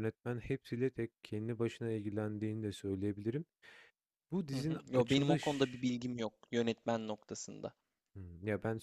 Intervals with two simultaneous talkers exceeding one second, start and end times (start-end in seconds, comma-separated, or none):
4.5-5.8